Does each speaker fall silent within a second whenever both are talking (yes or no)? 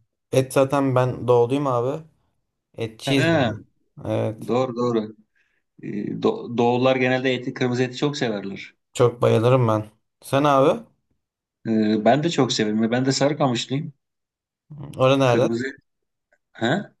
yes